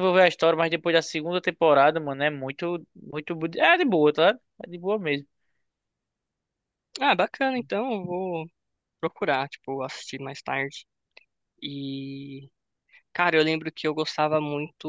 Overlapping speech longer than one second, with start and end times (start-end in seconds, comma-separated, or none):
none